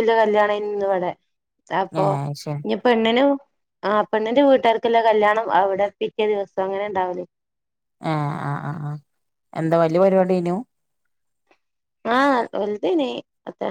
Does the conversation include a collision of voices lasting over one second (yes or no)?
no